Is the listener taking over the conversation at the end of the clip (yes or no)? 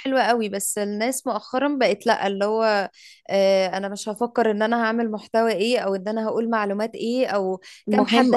no